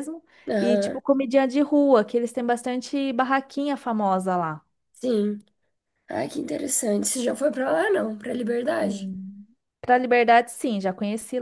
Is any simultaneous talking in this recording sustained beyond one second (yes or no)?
no